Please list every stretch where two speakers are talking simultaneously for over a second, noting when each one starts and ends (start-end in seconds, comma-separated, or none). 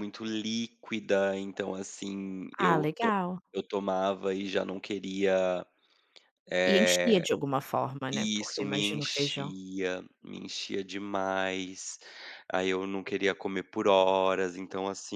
8.1-9.5